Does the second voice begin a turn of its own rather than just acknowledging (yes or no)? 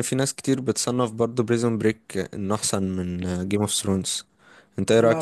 yes